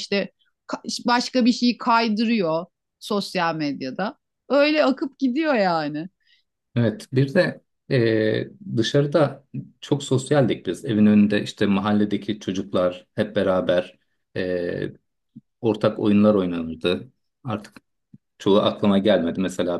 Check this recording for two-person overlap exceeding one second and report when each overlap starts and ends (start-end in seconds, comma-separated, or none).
none